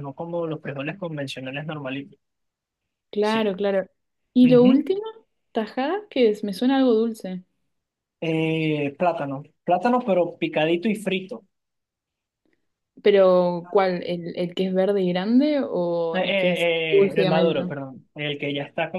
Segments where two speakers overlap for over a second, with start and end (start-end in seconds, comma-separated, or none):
16.1-17.7